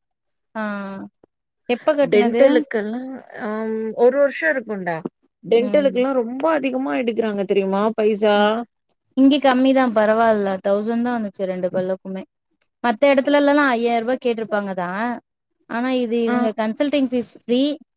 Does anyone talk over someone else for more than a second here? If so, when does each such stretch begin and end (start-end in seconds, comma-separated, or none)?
none